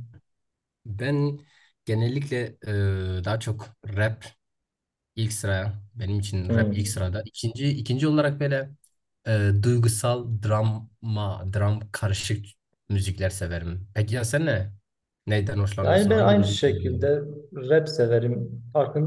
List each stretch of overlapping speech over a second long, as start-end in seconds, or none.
15.8-17.1